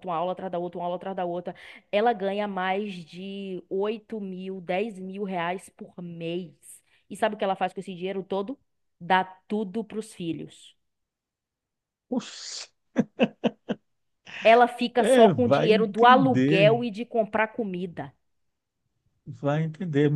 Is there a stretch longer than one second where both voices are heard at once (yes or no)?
yes